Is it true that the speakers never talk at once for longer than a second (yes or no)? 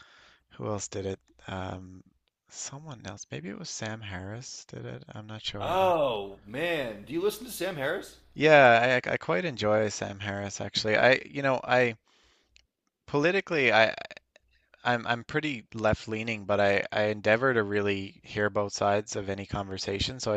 yes